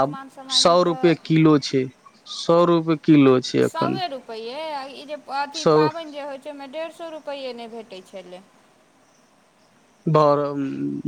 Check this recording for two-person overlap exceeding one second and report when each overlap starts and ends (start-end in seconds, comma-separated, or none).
none